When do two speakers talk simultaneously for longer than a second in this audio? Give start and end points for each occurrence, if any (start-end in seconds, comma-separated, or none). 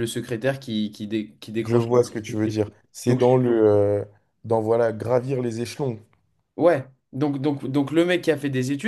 none